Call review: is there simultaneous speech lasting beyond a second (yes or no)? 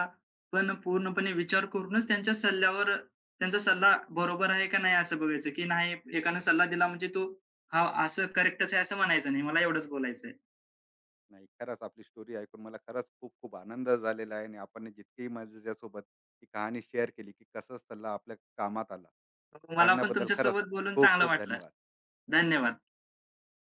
yes